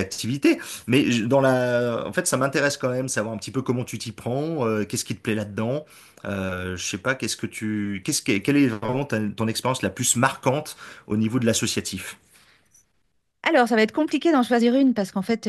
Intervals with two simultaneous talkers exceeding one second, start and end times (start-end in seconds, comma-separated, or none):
none